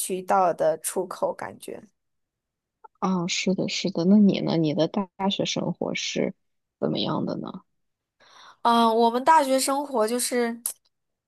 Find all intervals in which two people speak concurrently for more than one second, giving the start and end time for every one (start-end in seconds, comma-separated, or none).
none